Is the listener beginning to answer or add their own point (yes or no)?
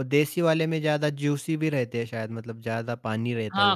yes